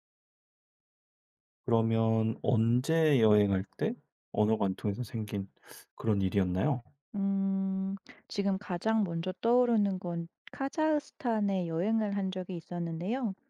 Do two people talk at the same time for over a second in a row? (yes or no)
no